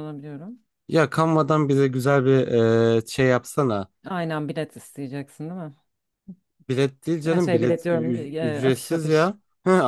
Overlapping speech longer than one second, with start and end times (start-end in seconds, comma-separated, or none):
7.2-9.2